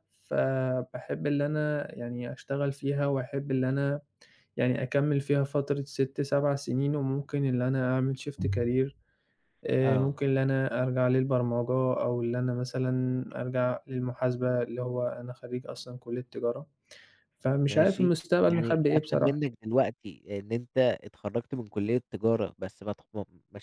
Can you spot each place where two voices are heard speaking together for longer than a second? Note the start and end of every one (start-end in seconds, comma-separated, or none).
17.6-19.4